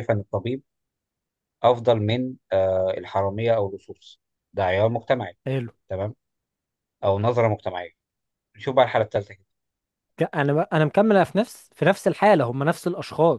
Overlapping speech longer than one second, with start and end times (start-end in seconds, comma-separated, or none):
none